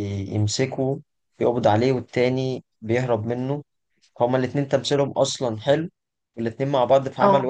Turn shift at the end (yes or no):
no